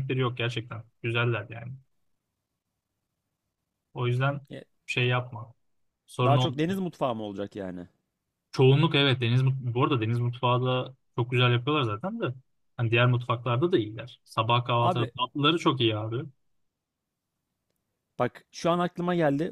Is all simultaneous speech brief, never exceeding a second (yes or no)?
yes